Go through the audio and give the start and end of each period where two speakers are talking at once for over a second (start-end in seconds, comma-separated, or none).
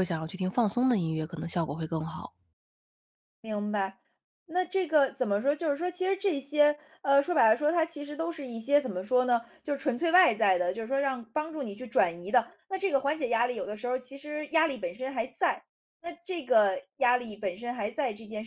none